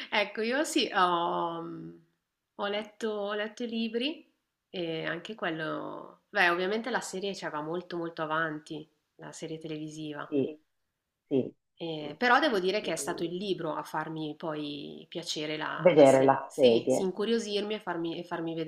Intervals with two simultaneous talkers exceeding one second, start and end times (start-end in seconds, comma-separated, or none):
15.8-17.1